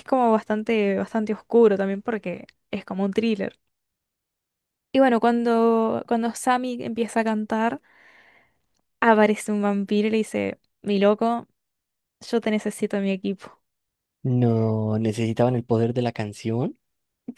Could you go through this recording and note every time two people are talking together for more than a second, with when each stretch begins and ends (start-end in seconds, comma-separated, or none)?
none